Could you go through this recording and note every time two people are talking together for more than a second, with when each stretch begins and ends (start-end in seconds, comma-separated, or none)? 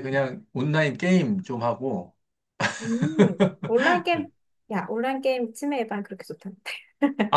none